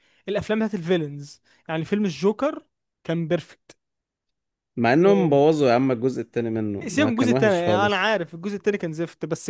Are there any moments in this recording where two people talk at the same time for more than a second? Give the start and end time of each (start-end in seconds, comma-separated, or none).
6.9-8.1